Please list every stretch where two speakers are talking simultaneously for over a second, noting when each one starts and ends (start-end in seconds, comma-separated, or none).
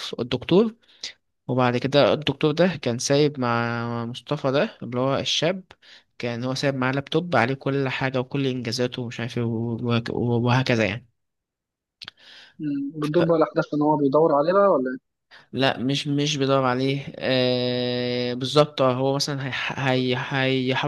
none